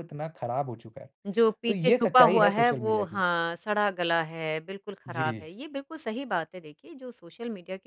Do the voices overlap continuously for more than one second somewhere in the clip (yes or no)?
yes